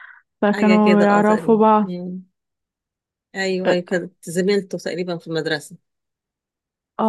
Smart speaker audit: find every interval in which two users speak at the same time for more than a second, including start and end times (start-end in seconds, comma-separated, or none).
0.5-1.9